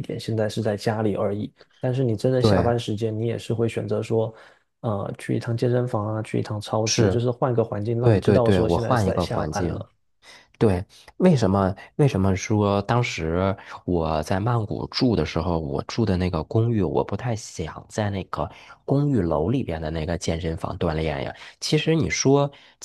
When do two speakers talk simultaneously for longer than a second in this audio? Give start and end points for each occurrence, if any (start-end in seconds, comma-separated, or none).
8.0-9.8